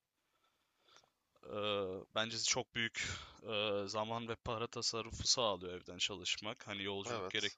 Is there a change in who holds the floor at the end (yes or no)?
no